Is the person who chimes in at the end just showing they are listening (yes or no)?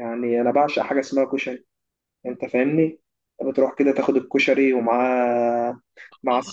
no